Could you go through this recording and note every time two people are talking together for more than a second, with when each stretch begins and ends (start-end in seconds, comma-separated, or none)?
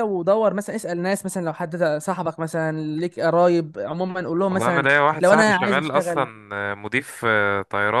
4.5-6.3